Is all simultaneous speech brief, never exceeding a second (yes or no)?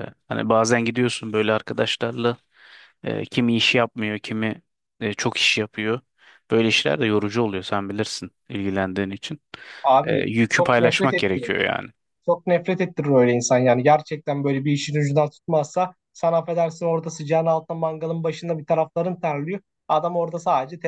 no